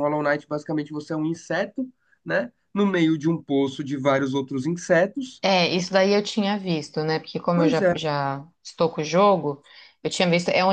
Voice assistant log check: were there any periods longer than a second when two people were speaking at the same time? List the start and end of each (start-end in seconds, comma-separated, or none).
none